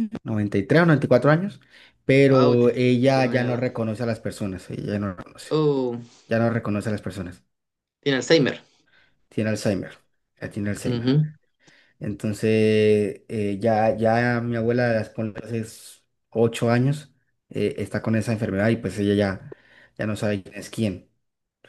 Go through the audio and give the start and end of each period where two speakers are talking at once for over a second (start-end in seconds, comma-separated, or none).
2.3-3.7